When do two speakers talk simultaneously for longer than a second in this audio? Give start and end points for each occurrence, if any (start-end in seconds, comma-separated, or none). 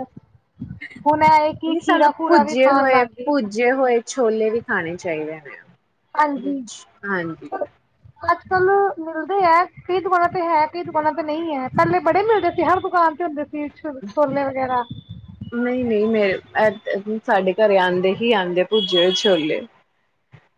1.7-3.5